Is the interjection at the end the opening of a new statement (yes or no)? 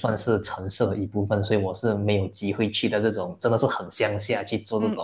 yes